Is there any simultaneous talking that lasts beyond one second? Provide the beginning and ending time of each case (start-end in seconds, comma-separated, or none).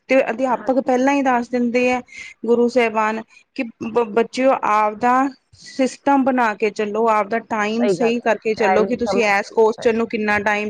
8.0-10.0